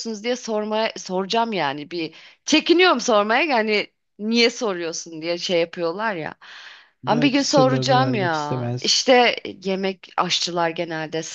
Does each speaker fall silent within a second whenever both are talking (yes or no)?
no